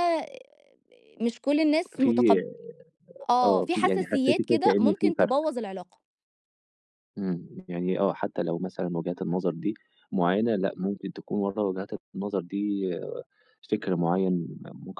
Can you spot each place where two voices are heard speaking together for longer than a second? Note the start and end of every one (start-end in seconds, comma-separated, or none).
3.4-5.4